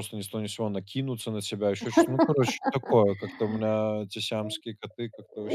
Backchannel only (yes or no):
no